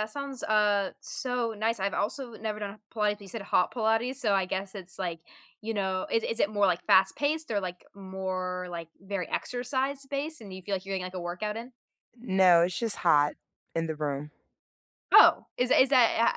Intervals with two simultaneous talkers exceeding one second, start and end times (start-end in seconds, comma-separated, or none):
none